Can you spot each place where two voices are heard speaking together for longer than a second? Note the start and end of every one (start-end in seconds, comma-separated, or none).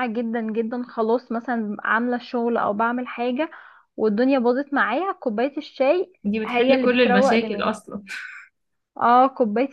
6.2-7.7